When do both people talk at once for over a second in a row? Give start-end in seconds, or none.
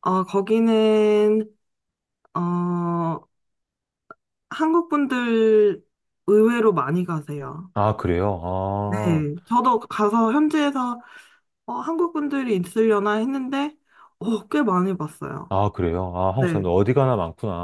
none